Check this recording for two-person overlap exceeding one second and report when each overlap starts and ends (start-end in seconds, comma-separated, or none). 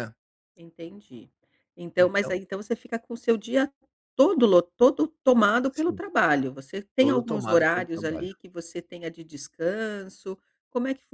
7.0-8.3